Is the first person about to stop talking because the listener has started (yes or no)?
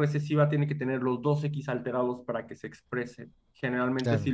no